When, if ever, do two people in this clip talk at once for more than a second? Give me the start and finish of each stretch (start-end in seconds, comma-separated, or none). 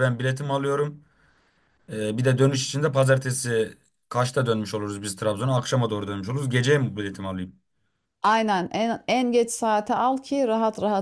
none